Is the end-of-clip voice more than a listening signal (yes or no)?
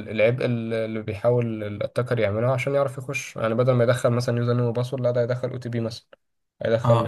yes